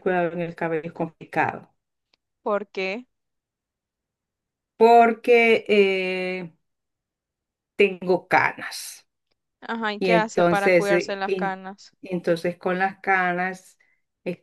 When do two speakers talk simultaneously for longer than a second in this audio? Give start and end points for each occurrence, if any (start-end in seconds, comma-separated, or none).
10.0-11.6